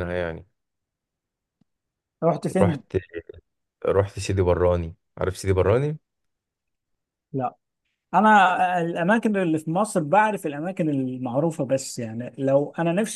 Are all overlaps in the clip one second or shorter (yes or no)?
yes